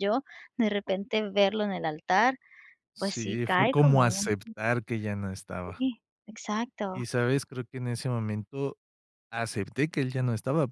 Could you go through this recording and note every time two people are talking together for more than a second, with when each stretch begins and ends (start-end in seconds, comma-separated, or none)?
3.0-4.3